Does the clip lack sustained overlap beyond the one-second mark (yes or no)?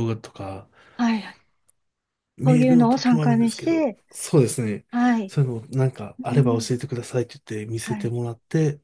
no